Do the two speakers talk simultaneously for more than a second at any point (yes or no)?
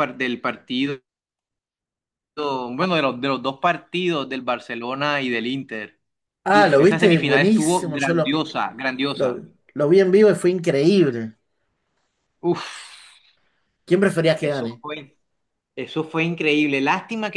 yes